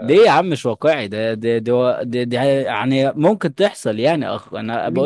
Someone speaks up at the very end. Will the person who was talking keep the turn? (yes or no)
no